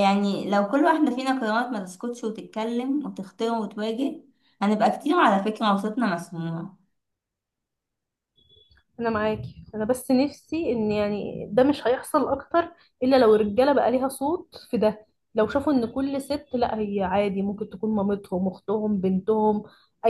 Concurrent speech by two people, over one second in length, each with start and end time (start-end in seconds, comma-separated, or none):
none